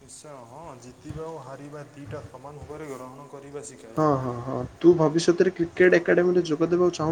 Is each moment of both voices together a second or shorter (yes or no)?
yes